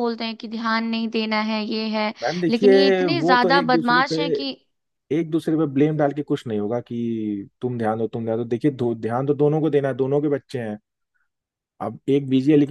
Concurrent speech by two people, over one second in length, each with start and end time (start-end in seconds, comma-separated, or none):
2.5-4.2